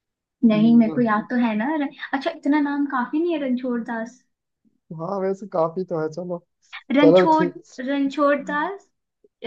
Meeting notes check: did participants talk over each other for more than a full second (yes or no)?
no